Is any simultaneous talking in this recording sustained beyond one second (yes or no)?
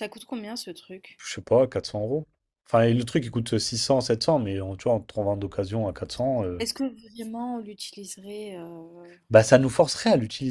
no